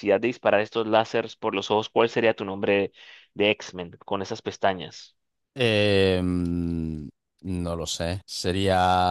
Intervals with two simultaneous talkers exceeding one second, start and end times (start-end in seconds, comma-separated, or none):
none